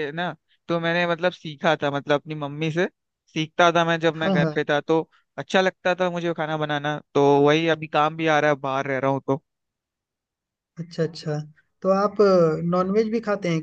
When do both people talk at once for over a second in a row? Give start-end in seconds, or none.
none